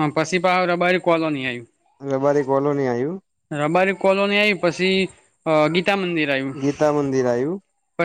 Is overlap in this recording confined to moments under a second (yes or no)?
yes